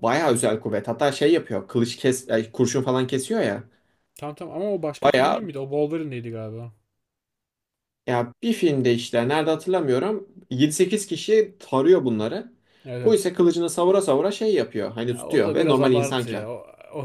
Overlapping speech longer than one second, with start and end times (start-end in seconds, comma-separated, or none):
15.1-16.5